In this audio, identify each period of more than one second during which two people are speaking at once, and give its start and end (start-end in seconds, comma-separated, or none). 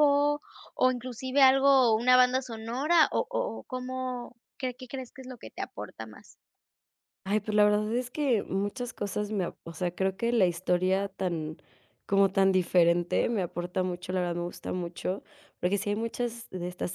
none